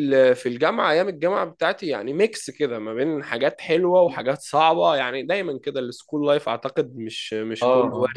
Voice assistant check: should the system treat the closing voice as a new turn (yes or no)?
yes